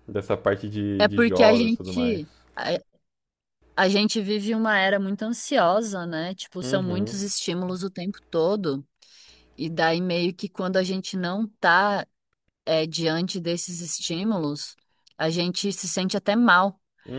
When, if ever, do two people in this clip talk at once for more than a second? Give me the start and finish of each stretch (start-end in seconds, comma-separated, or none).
1.0-2.2